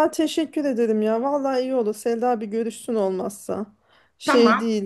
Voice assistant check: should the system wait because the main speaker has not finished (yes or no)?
no